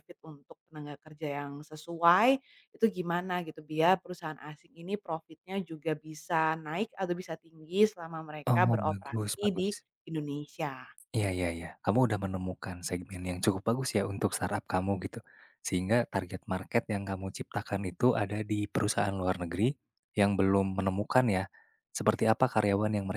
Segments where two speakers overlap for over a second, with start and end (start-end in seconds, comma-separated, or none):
8.4-9.8